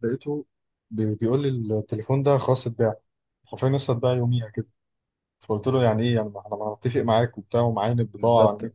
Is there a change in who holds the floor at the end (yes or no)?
yes